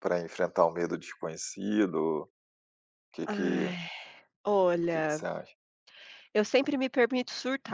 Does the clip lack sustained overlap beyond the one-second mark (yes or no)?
yes